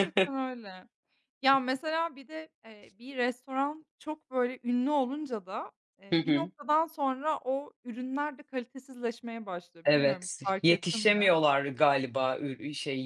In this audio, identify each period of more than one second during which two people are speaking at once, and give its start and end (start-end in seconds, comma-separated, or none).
9.8-11.3